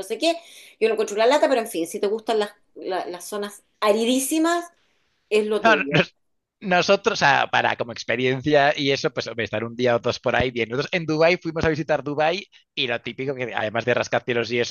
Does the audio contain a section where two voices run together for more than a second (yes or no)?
no